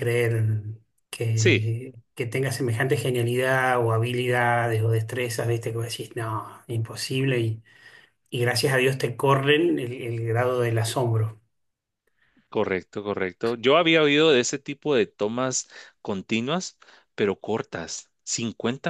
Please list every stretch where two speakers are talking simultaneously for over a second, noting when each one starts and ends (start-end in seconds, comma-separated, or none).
none